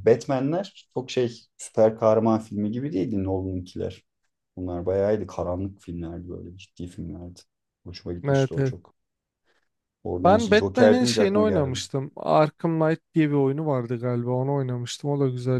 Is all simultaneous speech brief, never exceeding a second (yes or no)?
no